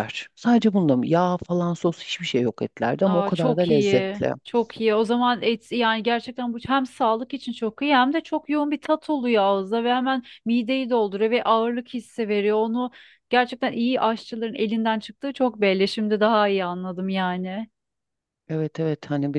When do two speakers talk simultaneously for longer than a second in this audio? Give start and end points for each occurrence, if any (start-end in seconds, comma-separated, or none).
3.0-4.3